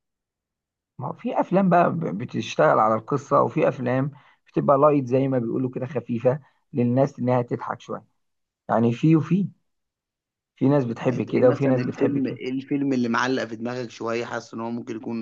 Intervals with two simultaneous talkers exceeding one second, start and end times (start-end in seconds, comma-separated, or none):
11.1-12.4